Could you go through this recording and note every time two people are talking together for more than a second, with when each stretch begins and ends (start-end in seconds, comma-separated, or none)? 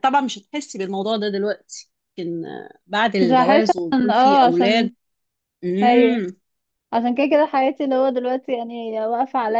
3.2-4.9